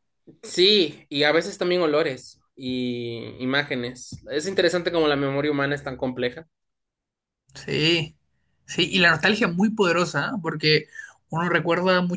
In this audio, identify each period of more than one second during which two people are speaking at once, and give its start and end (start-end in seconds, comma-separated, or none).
none